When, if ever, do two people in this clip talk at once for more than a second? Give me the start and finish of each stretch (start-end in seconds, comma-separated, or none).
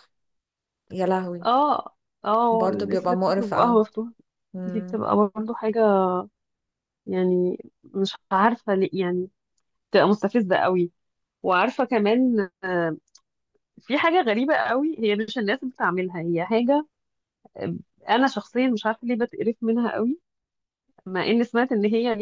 2.5-3.8